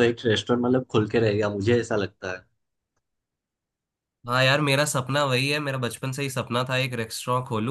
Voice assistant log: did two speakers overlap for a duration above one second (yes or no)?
no